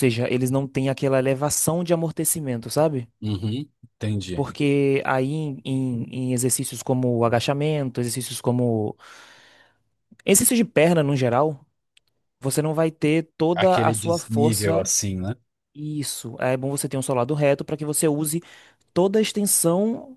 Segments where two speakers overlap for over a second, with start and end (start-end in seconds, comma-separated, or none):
13.5-14.9